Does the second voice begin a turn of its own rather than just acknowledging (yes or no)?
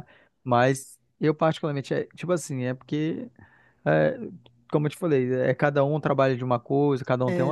no